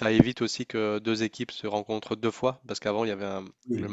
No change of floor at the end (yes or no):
yes